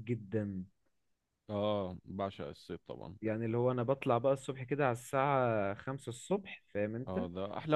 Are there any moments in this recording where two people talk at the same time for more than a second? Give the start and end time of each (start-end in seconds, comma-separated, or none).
none